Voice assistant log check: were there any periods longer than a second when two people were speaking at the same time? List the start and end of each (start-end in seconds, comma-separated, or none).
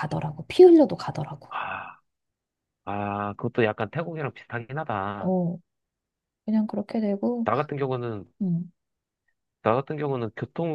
none